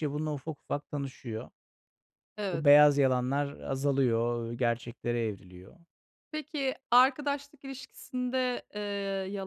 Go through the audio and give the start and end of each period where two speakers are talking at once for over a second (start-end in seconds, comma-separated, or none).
none